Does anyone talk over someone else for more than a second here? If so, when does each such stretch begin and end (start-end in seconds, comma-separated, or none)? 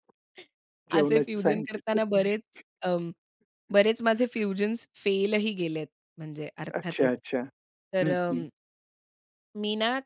1.0-2.4